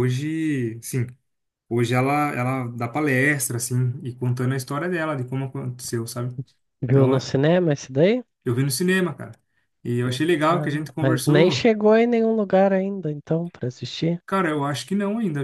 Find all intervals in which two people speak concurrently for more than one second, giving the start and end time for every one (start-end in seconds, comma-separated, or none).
10.5-11.7